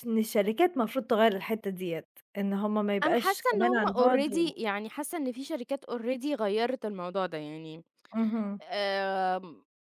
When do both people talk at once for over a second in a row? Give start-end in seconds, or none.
3.0-4.6